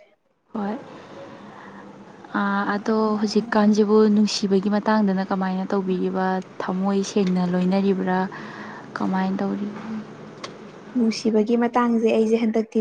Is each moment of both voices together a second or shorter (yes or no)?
yes